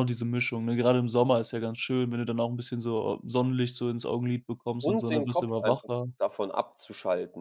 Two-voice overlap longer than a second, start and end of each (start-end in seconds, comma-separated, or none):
4.8-6.0